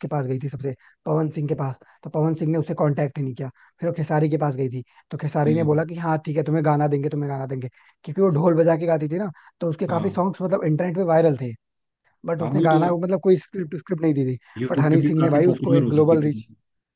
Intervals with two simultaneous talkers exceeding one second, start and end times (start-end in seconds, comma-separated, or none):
14.6-16.4